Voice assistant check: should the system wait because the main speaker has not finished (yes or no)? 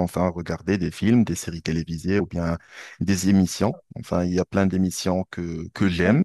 yes